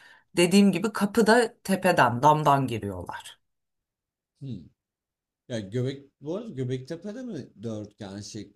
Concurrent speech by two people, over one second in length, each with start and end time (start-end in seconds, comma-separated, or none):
none